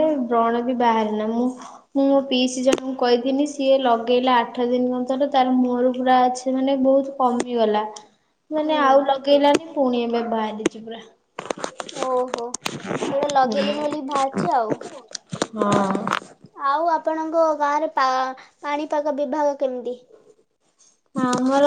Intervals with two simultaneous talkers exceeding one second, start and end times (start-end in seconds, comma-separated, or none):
none